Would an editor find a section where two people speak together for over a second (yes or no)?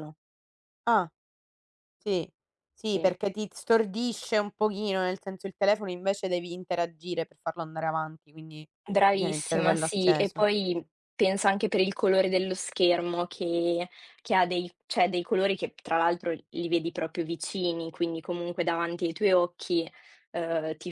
yes